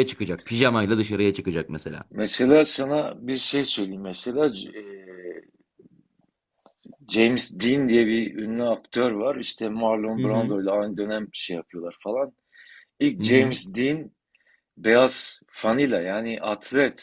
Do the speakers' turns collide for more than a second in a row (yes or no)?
no